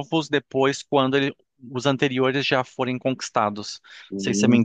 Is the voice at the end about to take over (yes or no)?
yes